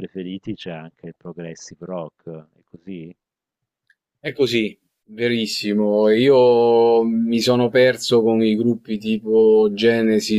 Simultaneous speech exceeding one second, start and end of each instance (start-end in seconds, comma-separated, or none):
none